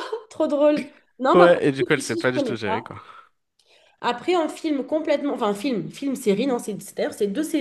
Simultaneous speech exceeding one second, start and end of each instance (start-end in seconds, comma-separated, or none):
1.3-2.9